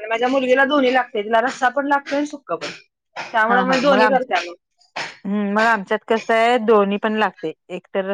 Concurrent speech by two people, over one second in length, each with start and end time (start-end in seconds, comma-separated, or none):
none